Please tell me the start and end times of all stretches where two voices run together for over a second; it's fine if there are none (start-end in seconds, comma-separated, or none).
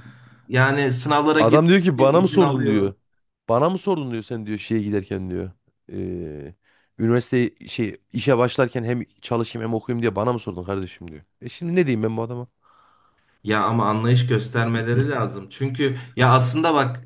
1.4-2.9